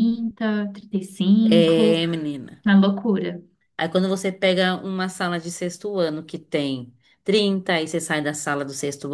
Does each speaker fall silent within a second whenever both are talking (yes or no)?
yes